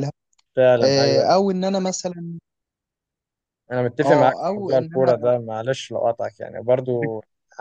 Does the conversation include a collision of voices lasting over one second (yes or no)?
yes